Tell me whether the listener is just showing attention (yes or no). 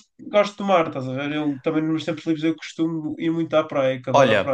no